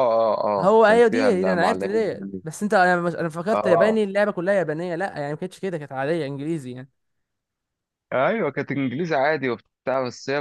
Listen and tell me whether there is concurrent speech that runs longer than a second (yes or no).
yes